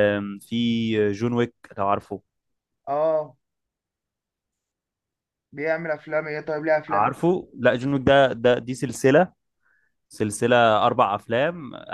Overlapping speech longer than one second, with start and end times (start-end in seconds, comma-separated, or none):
none